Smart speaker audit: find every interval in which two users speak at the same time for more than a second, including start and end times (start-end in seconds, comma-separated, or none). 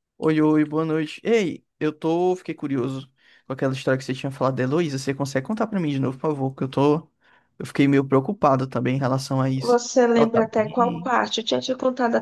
9.6-11.2